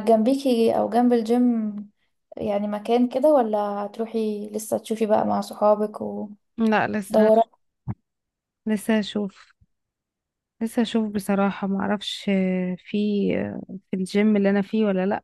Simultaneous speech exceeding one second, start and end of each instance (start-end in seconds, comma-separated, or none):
none